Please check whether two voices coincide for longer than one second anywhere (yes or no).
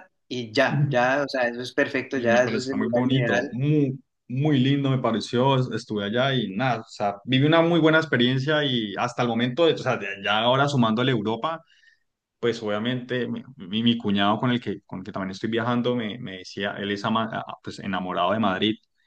yes